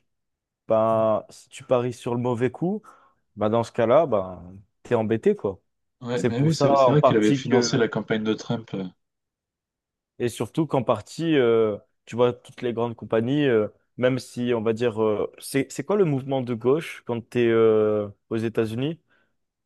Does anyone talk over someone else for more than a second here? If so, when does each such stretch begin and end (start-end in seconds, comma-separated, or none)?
6.1-7.7